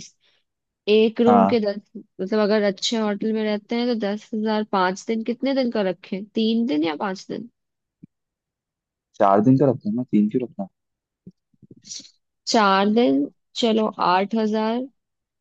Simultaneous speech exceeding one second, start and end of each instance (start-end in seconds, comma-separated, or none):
none